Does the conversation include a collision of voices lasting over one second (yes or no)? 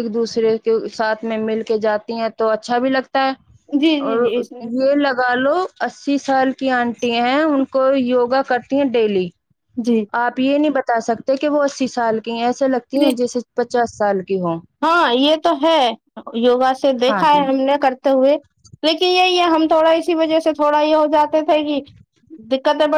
no